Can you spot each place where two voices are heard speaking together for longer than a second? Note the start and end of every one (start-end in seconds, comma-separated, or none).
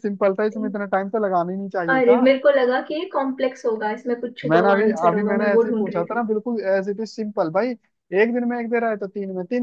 4.5-6.2